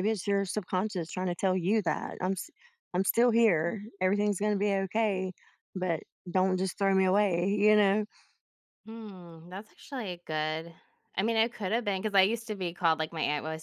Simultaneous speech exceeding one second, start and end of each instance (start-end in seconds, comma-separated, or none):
none